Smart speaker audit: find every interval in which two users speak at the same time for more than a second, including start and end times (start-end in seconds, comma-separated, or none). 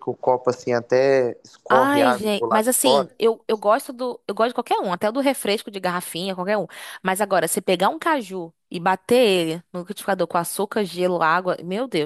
1.7-3.2